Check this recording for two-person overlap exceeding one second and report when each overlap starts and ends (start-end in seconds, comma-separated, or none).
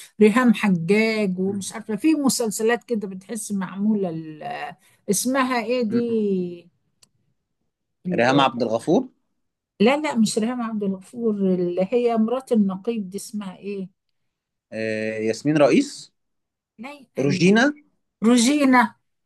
none